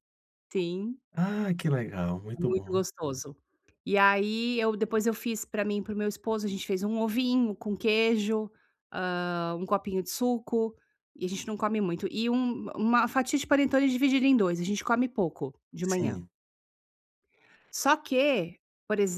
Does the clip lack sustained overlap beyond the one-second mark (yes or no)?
yes